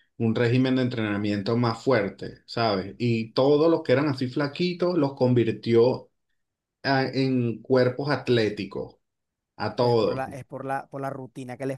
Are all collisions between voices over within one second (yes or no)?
yes